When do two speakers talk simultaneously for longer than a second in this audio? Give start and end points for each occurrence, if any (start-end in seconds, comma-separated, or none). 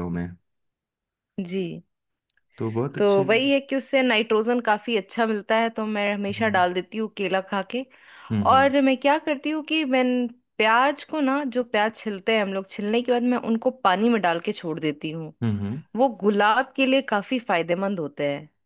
none